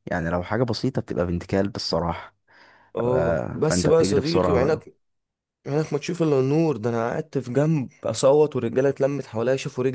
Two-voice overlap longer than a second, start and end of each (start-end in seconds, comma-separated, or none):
3.0-4.8